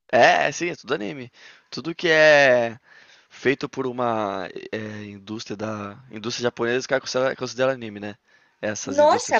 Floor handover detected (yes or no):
yes